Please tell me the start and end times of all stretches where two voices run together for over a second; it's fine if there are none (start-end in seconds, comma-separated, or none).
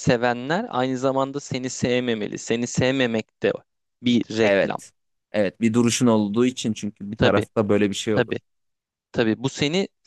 none